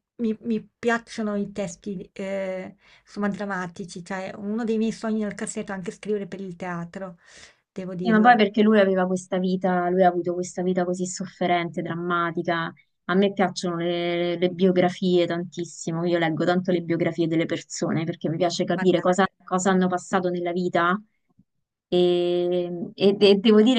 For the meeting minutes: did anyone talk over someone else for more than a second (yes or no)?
no